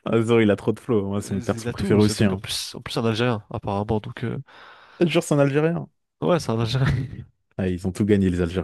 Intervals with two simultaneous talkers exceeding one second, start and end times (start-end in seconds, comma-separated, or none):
1.2-2.4